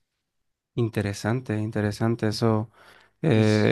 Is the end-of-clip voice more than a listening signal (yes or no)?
no